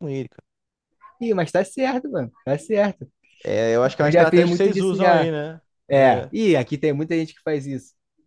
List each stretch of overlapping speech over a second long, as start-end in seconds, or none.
4.0-5.3